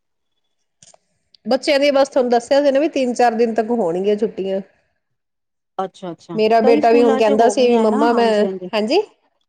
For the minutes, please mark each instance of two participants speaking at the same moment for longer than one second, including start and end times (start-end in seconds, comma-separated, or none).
6.4-8.3